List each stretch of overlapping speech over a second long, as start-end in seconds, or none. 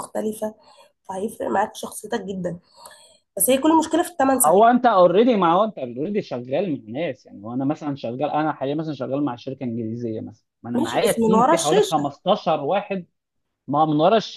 10.7-12.1